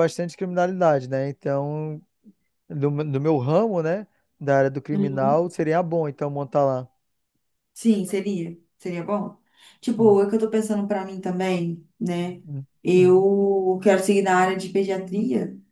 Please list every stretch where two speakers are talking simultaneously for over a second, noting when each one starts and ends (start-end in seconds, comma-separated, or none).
none